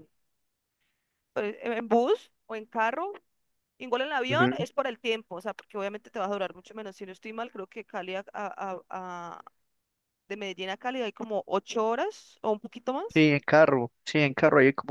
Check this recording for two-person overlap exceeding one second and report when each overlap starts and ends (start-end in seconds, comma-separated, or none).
none